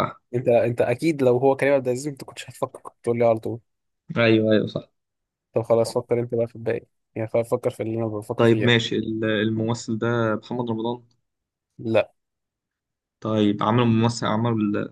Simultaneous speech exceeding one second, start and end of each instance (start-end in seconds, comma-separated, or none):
none